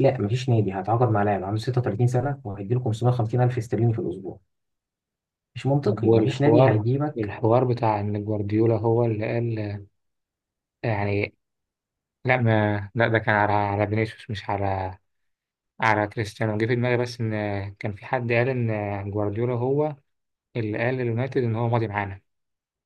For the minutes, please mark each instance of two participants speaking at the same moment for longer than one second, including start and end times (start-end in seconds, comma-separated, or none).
5.8-7.3